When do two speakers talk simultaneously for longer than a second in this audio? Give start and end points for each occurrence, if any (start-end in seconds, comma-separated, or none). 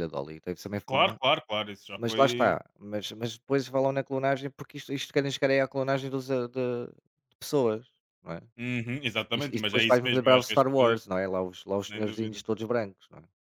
9.3-11.0